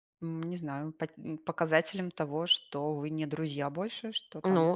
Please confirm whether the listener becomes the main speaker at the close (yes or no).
yes